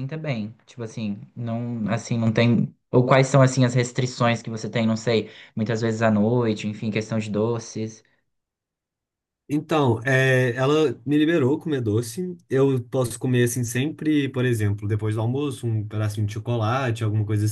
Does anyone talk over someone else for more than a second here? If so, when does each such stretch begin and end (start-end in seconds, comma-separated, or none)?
none